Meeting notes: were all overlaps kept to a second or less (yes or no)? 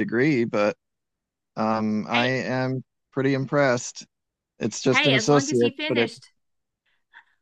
no